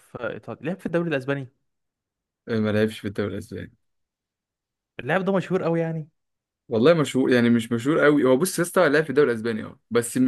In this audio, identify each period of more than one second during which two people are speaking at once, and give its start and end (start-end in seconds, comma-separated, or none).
none